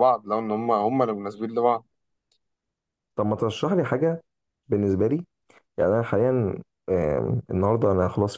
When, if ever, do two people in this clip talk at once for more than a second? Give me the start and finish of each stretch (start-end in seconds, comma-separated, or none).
none